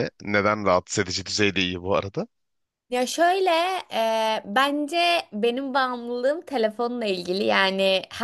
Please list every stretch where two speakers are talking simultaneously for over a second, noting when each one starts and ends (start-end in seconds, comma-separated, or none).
none